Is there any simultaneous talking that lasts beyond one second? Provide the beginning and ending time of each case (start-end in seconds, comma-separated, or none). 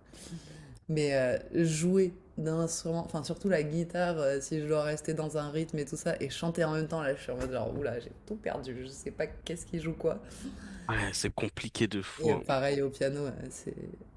none